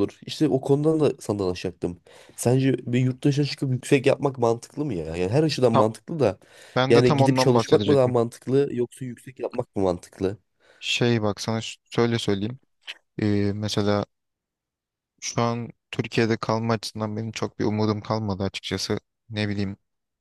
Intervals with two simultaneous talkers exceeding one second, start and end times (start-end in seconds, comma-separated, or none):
6.9-8.1